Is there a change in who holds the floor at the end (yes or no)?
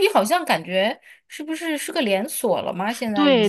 yes